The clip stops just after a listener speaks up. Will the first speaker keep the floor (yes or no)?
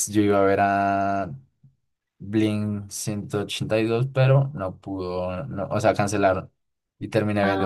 yes